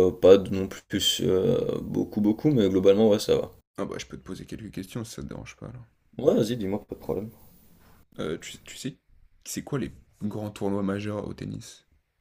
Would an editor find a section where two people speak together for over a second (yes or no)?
no